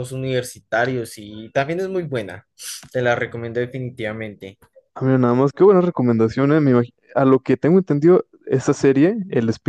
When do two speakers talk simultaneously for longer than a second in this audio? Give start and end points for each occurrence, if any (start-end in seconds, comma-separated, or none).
none